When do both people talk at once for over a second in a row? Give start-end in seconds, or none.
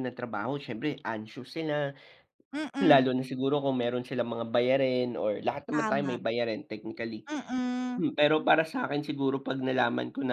none